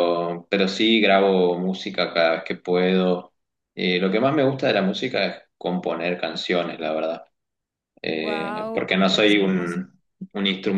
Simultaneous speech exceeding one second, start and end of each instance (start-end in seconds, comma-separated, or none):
8.2-9.8